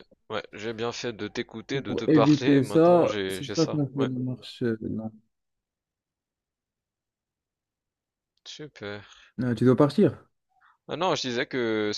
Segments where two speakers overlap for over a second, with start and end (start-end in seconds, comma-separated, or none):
1.7-4.1